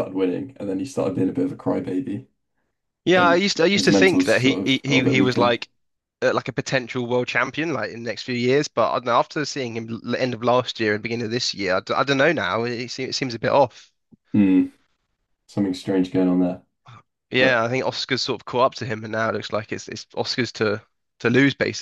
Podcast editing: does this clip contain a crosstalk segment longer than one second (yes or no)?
yes